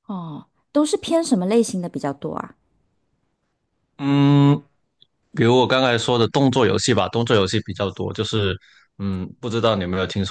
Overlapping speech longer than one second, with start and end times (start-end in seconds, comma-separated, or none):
none